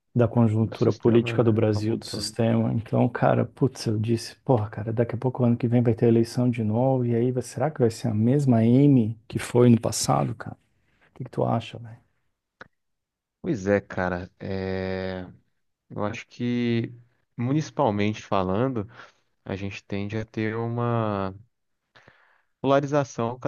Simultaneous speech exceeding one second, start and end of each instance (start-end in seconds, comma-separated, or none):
0.6-2.3